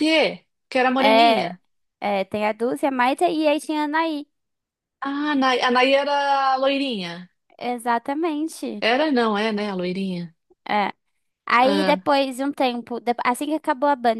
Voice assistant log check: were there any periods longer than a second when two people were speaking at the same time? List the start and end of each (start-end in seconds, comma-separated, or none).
none